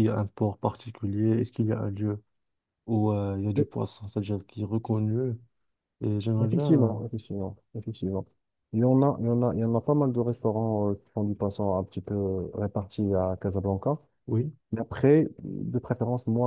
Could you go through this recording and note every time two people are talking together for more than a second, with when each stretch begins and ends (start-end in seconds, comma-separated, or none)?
none